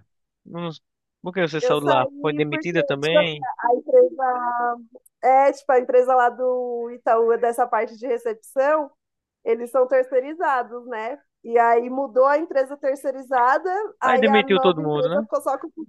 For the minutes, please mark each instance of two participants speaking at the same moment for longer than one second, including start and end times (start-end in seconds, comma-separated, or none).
1.6-3.2, 14.0-15.2